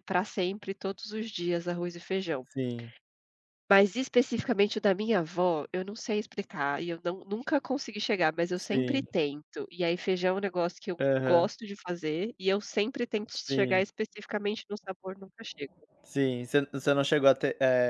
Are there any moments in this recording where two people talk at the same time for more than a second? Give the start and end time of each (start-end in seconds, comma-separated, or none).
none